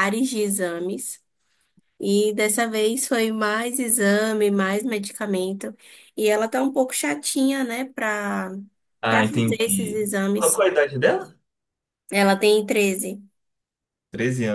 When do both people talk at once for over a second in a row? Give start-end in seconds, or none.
9.1-10.6